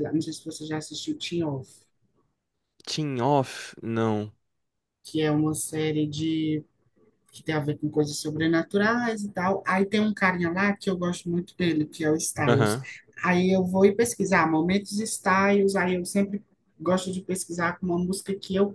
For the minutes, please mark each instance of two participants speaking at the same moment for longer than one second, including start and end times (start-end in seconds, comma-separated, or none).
none